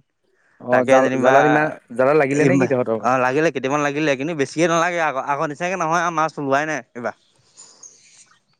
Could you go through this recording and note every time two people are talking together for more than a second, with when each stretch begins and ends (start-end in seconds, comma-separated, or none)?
none